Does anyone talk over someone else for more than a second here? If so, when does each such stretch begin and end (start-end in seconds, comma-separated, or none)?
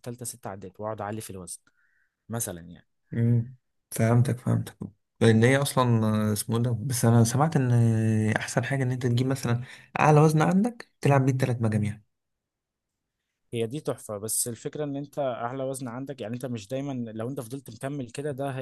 none